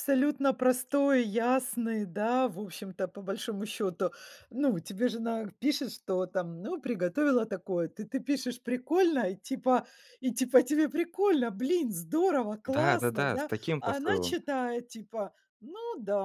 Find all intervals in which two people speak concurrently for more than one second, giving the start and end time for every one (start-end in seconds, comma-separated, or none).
12.7-14.3